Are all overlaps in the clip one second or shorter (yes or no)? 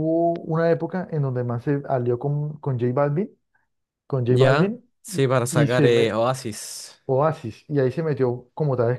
no